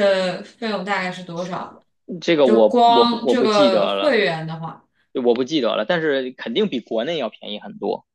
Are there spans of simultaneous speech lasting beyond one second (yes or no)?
yes